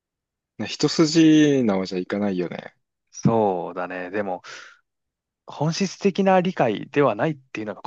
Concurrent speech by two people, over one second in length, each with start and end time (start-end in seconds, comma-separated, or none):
none